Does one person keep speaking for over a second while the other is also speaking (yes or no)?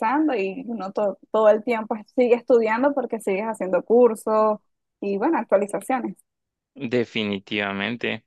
no